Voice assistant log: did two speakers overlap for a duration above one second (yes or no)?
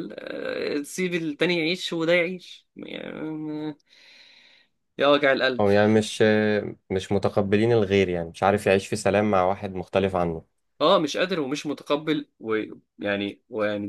no